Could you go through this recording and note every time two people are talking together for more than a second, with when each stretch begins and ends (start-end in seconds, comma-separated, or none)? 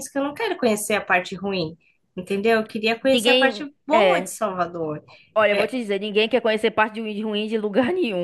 3.1-4.4